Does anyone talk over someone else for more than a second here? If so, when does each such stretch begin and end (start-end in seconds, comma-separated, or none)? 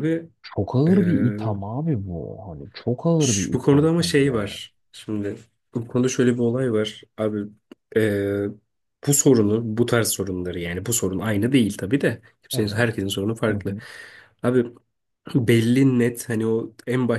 3.2-4.6